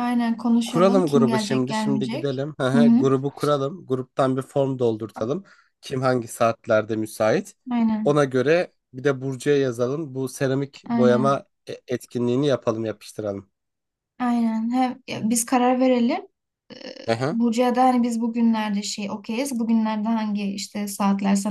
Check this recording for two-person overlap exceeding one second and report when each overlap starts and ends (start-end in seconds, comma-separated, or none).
0.6-3.1